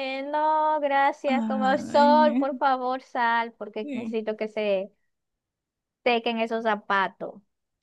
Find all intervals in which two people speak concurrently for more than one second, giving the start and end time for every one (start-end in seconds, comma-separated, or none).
1.3-2.5